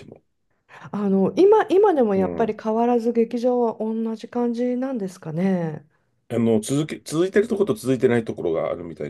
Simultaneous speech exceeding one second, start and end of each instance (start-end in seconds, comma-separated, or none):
none